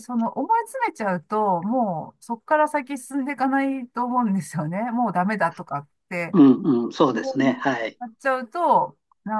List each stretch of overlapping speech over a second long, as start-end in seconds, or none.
none